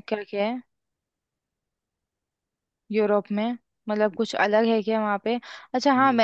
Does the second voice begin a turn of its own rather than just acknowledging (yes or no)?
no